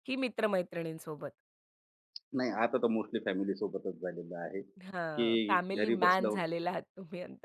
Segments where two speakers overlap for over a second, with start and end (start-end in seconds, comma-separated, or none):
4.8-6.3